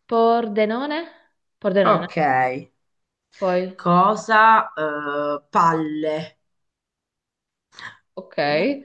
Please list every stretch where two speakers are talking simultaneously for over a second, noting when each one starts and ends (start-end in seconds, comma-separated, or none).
none